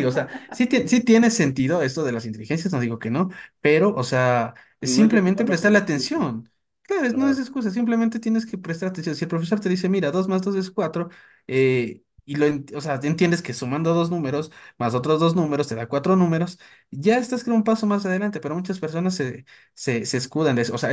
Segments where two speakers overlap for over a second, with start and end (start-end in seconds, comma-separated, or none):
4.8-6.2